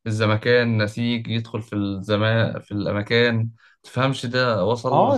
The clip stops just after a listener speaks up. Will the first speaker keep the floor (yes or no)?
no